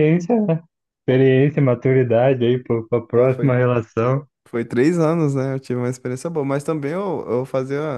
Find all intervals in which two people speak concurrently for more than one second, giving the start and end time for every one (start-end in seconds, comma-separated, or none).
none